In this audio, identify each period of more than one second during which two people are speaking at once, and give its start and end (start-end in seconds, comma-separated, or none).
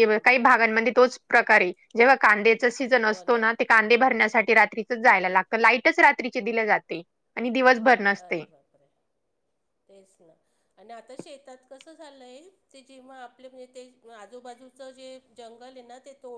none